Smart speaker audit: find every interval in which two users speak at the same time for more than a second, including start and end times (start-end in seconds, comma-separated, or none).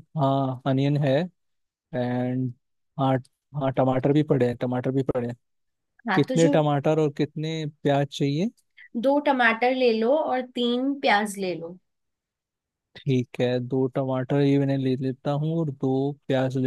none